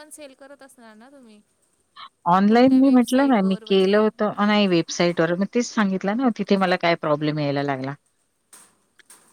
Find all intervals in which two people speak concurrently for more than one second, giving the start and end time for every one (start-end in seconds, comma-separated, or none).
2.5-4.0